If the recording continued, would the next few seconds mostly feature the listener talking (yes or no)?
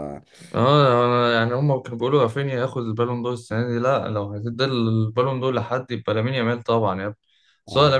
no